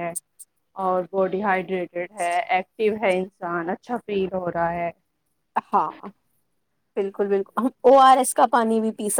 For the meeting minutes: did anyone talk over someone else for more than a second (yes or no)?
no